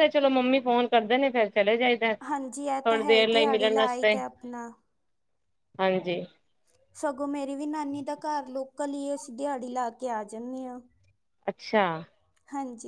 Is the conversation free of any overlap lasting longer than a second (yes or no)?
yes